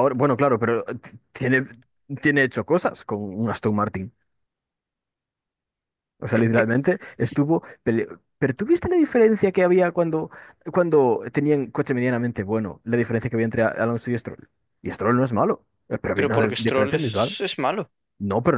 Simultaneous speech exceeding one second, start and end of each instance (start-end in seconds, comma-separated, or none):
16.1-17.4